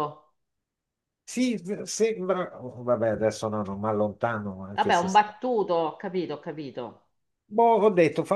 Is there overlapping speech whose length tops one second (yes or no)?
no